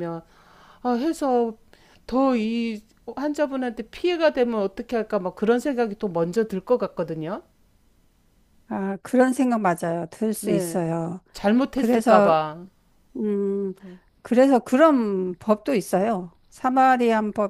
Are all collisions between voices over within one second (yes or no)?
yes